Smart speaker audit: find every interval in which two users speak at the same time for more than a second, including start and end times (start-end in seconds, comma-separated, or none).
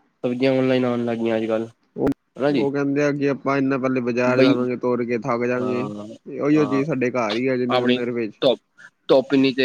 6.5-8.0